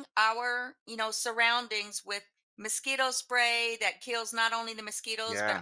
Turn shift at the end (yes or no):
no